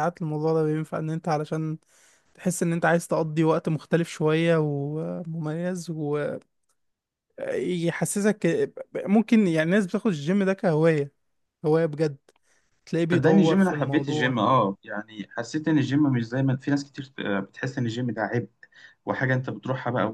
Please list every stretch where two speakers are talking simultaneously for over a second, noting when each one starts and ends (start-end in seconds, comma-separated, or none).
13.1-14.4